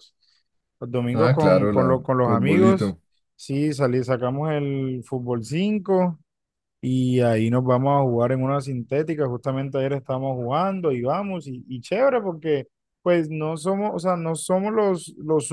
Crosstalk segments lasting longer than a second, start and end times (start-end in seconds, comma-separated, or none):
1.1-3.0